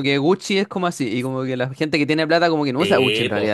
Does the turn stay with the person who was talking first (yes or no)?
no